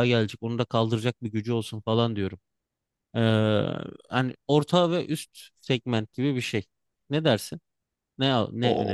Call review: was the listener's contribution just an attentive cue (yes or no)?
no